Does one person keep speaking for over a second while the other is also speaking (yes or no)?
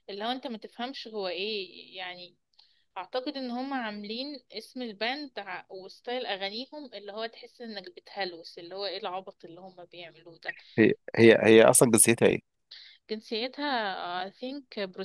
no